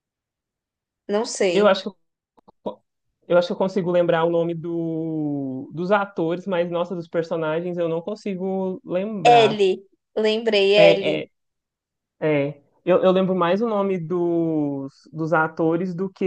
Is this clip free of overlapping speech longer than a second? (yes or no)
yes